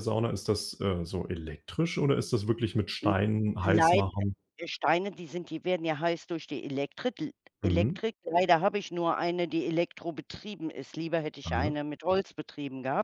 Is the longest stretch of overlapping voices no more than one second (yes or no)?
yes